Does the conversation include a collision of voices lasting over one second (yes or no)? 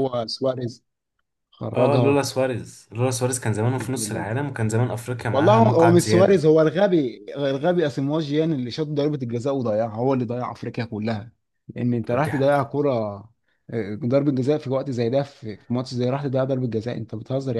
yes